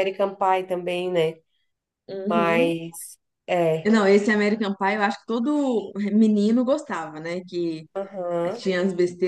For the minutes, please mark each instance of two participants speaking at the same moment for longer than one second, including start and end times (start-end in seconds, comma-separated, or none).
none